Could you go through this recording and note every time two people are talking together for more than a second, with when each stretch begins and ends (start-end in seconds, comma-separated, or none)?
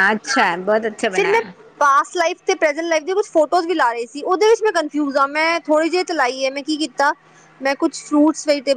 none